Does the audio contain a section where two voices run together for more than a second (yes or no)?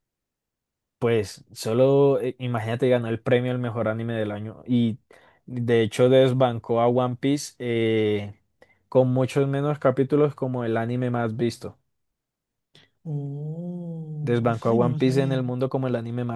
yes